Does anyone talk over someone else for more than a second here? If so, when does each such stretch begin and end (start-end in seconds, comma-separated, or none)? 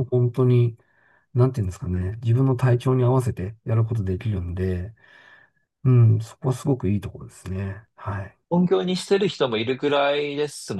none